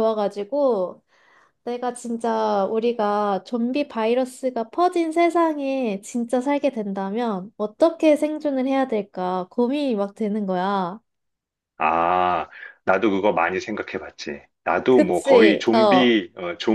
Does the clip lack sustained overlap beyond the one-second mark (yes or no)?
no